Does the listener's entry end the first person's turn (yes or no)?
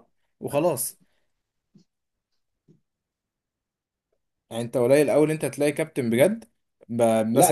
yes